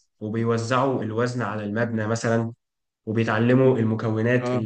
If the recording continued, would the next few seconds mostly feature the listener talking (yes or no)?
no